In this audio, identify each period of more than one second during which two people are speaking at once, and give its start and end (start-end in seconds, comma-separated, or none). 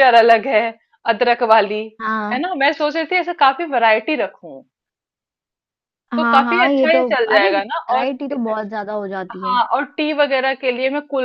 6.2-8.1